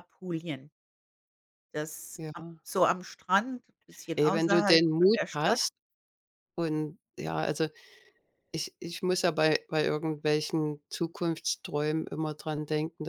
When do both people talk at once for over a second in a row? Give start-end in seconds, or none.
4.2-5.6